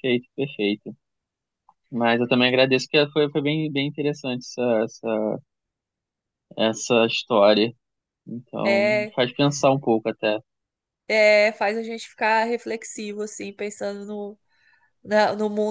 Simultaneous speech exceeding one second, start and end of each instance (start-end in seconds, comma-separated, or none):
none